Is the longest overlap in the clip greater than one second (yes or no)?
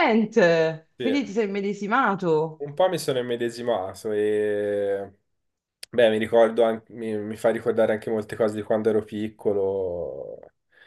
no